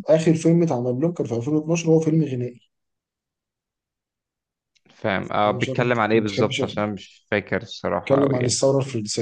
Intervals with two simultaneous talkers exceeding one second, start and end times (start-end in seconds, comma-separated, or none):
5.5-6.8